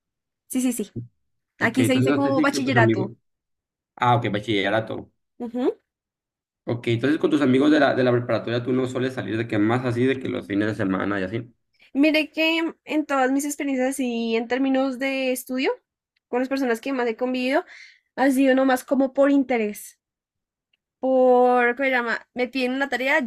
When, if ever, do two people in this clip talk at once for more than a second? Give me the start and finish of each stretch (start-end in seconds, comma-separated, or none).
1.6-3.1